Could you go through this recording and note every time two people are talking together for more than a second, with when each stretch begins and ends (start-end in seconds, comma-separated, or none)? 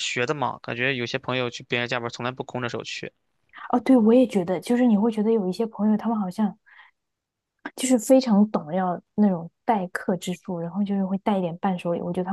none